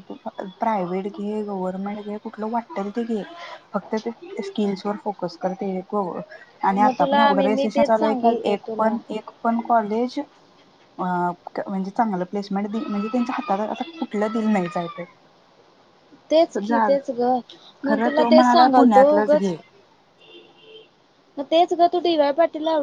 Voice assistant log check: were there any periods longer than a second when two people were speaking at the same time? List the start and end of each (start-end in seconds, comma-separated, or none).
6.8-8.9, 17.9-19.5